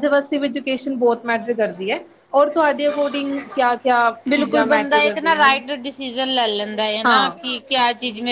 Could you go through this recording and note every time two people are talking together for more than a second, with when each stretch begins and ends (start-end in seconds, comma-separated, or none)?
4.3-5.6